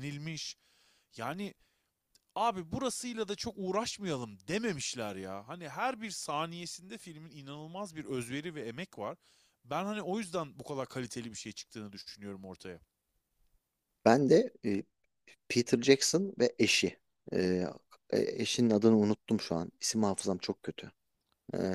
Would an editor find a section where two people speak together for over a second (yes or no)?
no